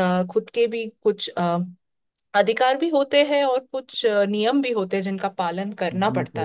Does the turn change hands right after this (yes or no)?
yes